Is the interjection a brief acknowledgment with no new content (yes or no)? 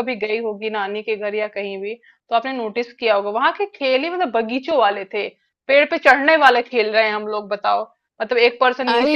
yes